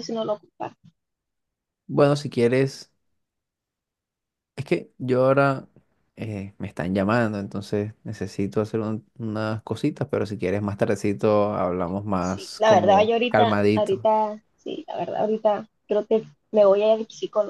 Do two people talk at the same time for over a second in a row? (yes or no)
yes